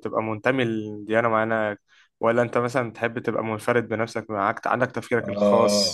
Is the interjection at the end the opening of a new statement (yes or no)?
yes